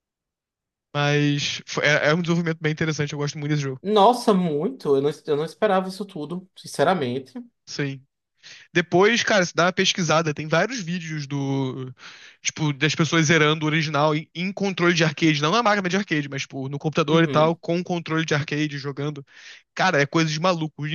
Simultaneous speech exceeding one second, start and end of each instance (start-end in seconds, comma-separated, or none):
none